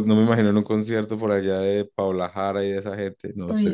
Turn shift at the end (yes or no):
yes